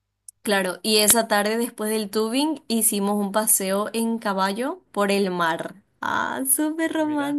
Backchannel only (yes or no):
yes